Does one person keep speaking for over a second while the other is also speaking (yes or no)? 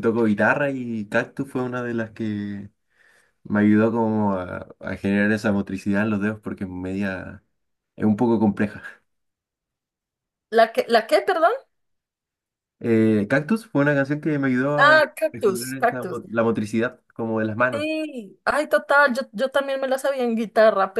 yes